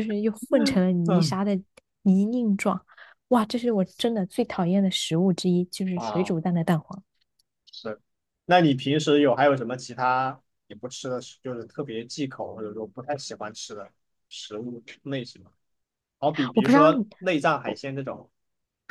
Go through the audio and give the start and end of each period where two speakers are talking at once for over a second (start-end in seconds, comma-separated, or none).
none